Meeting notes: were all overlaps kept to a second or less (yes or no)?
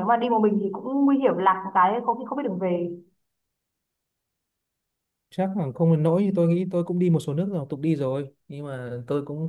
yes